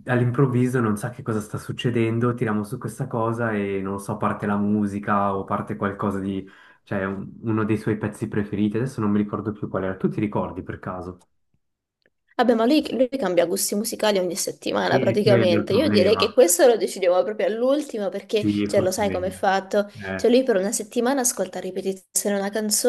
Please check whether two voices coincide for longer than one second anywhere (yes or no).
yes